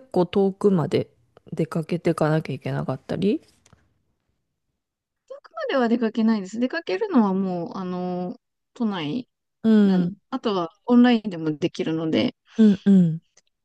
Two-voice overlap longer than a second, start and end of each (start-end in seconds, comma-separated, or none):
none